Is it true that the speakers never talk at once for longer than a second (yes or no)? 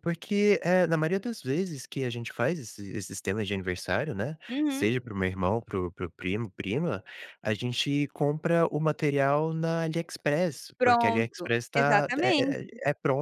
no